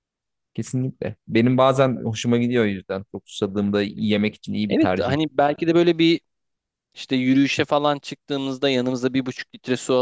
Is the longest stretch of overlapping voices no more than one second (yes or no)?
yes